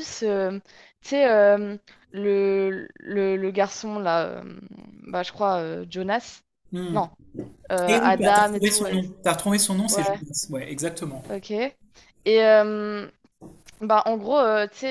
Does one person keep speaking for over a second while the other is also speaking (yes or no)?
yes